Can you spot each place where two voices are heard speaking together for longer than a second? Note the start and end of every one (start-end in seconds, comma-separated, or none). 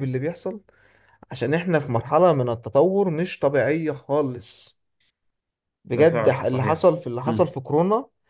5.9-7.5